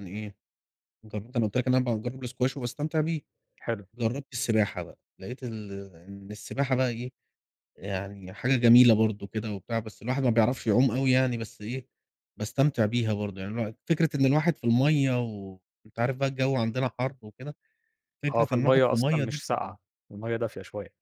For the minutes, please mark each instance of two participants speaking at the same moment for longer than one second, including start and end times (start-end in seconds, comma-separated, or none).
18.3-19.7